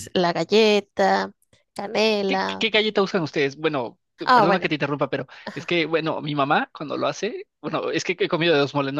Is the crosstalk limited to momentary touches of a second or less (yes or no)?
yes